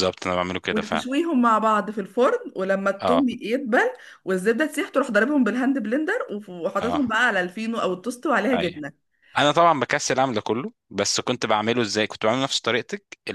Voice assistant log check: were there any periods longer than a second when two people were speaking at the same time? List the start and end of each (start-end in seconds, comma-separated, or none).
none